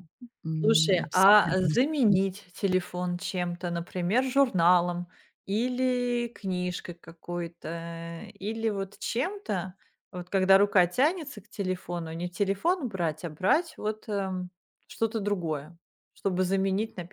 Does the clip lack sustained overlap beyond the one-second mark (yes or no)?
no